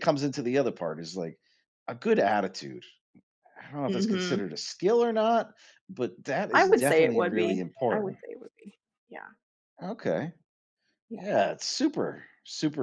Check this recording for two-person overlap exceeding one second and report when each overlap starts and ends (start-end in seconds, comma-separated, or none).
6.5-8.2